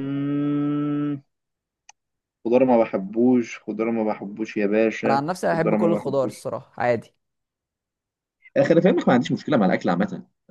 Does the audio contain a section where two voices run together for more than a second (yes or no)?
yes